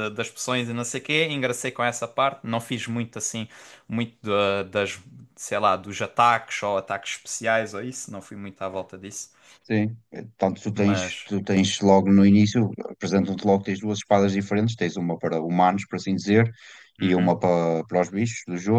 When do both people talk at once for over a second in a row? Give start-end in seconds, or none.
none